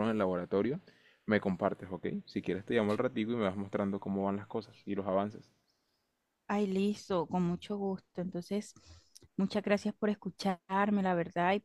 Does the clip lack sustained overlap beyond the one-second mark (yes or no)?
yes